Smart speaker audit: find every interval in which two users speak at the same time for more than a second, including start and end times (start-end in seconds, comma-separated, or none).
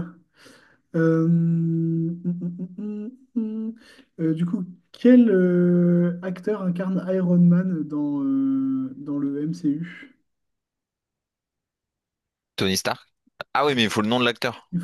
none